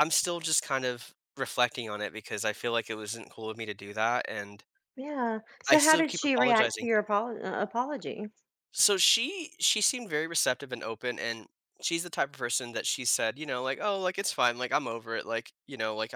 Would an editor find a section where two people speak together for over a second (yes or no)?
yes